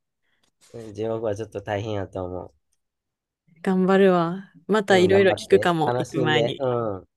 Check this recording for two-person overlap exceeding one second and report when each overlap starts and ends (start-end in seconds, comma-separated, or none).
4.9-6.6